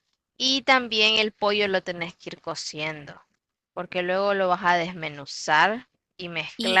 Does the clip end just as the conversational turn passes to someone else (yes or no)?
yes